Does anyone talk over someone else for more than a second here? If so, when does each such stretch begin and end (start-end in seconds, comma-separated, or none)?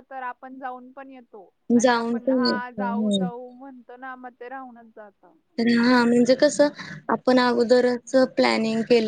1.8-3.3